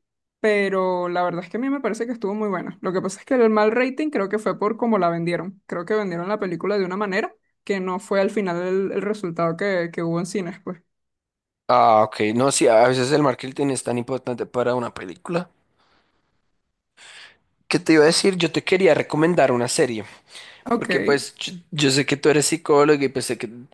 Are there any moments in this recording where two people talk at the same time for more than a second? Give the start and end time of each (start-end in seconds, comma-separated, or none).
none